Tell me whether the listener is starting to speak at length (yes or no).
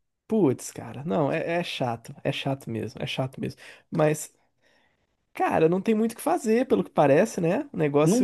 no